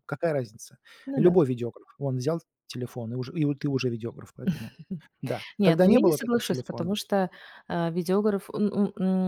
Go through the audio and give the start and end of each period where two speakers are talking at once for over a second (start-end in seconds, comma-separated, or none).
5.6-6.9